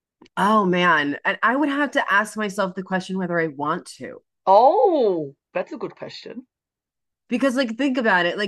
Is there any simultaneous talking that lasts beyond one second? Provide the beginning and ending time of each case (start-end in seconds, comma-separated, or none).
none